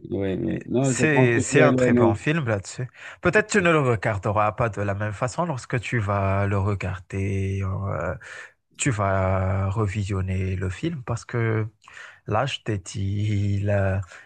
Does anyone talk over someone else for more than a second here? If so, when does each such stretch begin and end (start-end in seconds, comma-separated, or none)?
0.5-2.2